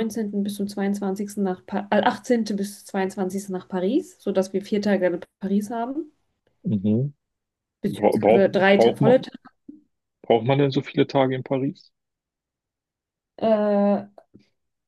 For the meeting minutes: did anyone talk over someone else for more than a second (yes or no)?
yes